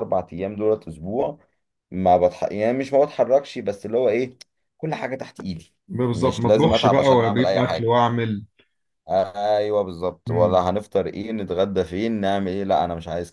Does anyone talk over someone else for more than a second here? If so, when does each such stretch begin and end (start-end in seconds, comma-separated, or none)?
6.1-7.9